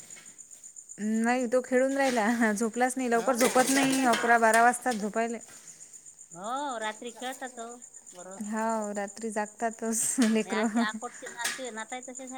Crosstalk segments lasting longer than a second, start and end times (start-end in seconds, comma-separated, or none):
3.1-4.9